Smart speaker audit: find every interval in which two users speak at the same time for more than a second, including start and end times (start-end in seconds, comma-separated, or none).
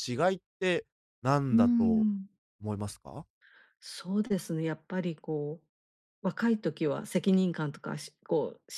none